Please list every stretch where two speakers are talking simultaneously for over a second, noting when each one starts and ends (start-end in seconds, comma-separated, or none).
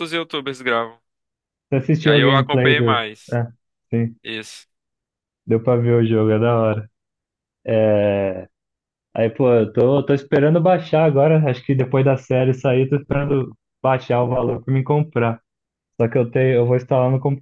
2.0-3.4